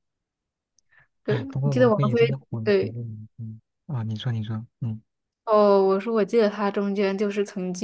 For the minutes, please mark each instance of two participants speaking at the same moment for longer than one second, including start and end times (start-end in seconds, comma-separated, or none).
1.3-3.0